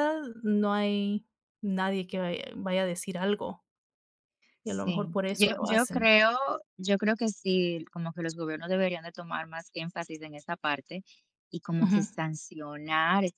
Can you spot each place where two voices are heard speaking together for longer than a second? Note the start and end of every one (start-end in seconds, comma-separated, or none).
4.6-6.1